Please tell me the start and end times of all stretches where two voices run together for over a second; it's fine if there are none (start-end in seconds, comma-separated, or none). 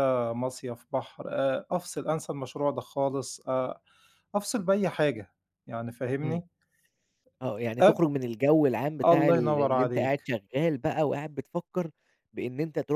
9.0-10.3